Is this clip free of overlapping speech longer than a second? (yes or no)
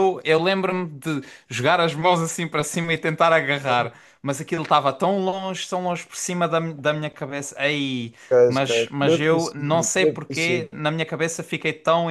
no